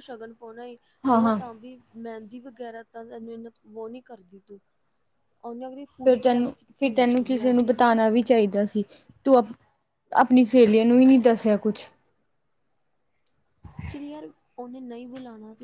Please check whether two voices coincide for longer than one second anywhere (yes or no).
yes